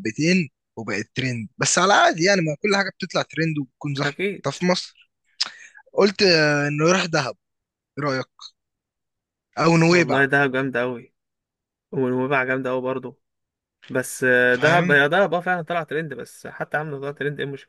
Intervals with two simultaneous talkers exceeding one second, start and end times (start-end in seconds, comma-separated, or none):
none